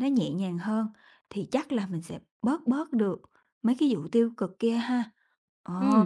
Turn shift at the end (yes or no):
yes